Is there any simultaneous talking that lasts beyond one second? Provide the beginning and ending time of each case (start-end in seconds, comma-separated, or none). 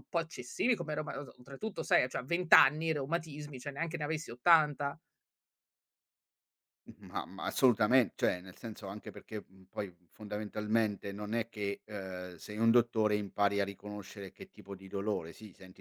none